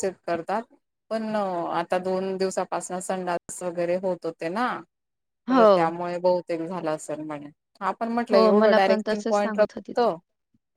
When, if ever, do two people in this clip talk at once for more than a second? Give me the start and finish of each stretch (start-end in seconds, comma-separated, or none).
8.3-10.1